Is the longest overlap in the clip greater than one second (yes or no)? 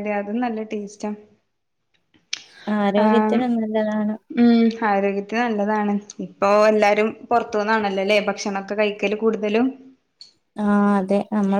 no